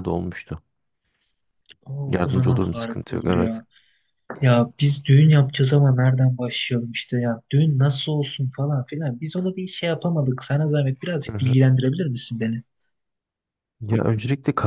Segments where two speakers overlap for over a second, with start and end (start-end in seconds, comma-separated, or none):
2.1-3.6